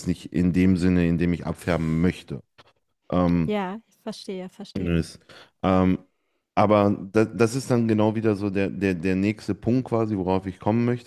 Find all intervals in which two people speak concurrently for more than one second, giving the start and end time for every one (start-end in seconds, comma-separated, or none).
none